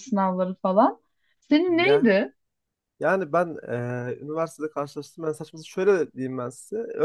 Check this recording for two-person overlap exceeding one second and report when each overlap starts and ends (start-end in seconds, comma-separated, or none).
none